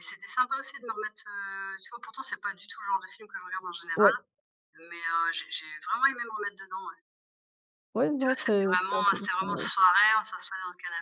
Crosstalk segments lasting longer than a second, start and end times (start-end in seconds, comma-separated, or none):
8.2-9.7